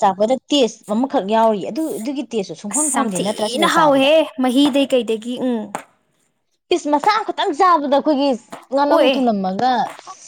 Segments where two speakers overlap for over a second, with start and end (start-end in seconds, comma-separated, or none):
2.7-4.1